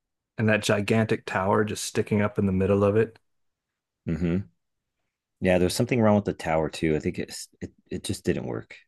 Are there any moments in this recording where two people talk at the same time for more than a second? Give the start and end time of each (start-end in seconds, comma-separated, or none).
none